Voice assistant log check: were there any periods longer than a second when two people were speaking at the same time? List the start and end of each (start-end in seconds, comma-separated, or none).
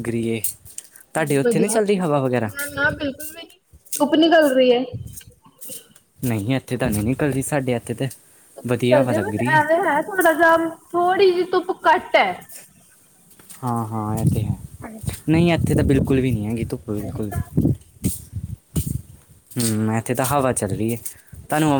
none